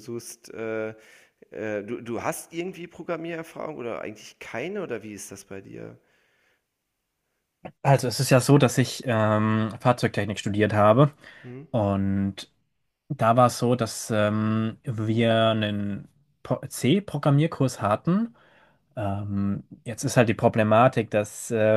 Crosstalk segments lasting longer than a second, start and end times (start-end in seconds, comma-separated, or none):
none